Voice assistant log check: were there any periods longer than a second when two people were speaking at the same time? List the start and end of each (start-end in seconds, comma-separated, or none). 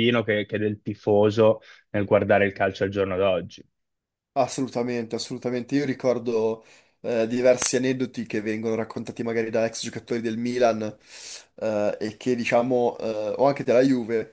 none